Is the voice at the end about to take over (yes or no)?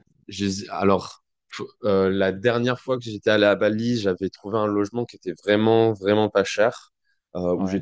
no